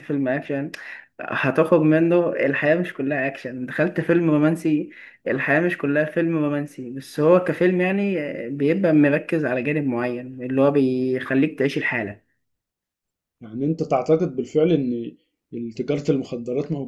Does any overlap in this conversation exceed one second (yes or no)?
no